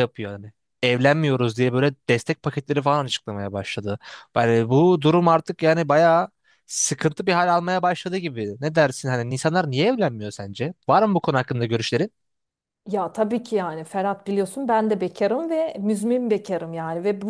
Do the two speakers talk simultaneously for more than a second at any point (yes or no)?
no